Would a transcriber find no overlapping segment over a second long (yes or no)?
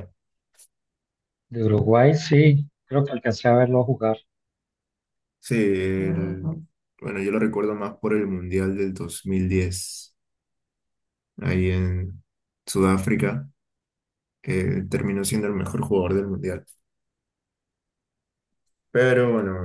yes